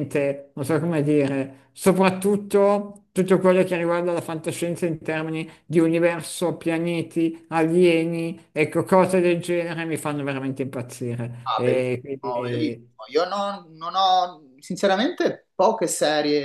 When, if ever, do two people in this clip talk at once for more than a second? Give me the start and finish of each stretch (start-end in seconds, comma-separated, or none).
11.4-13.0